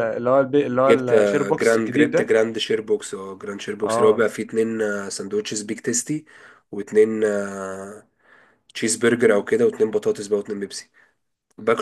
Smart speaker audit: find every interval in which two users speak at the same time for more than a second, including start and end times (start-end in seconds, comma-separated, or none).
0.9-2.3